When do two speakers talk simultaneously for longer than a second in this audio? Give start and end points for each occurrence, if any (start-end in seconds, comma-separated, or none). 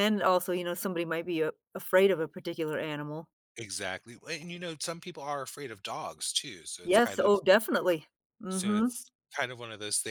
none